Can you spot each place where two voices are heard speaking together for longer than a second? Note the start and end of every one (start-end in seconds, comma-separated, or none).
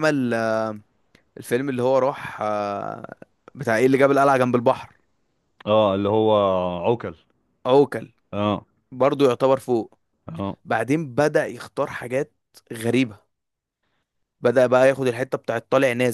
none